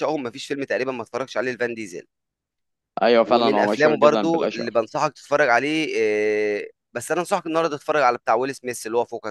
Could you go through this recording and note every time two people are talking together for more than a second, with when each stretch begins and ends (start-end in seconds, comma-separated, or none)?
3.2-4.7